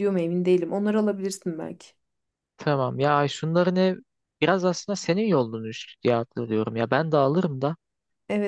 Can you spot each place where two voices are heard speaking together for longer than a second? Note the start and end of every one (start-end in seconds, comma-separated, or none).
none